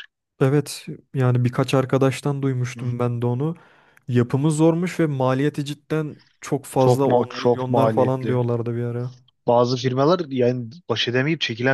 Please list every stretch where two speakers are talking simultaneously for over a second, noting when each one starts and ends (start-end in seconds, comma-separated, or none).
6.8-8.4